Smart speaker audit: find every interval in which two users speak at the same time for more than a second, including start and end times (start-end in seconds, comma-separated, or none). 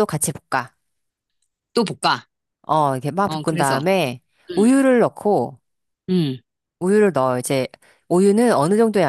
none